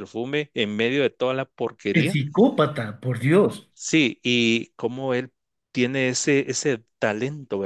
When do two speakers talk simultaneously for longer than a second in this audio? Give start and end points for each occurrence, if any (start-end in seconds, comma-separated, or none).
none